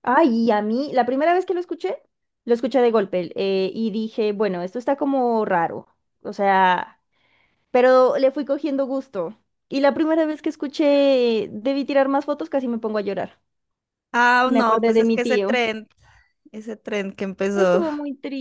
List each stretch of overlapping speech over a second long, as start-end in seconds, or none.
14.4-15.7